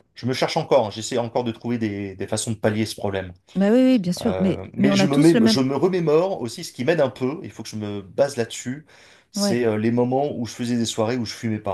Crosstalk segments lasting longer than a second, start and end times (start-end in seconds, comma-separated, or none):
4.2-5.6